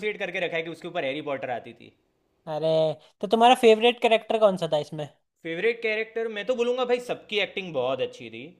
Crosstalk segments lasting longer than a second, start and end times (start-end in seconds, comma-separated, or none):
none